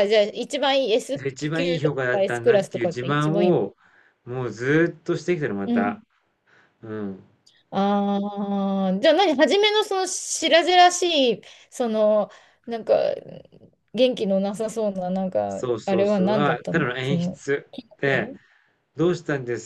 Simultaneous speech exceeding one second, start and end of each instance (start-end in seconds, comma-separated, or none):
1.1-3.6, 15.5-17.4